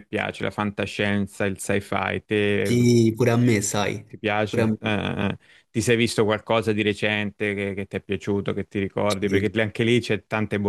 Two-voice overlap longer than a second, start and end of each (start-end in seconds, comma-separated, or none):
none